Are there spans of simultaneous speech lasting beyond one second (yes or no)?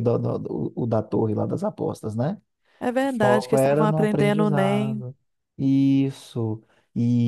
yes